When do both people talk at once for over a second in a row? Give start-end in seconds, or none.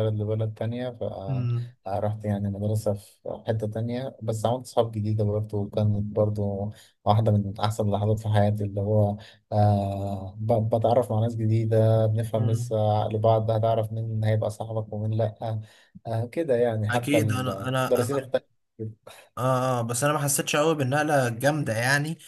16.9-18.3